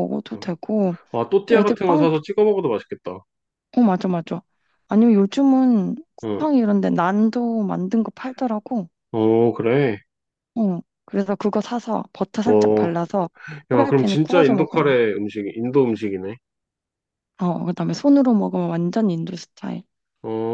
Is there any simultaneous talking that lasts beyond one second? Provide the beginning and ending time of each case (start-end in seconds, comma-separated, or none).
13.7-15.0